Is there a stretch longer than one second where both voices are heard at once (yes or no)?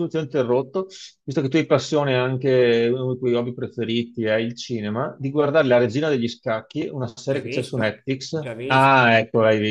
yes